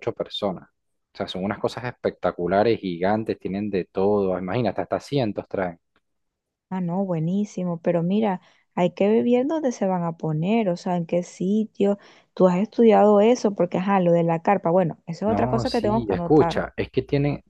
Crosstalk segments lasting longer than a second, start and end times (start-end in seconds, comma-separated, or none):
15.2-16.7